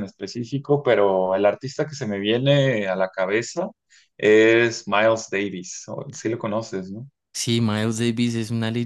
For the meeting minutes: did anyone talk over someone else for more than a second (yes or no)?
no